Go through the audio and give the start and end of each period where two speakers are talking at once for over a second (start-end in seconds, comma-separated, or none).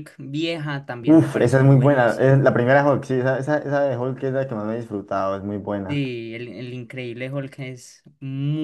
1.0-2.4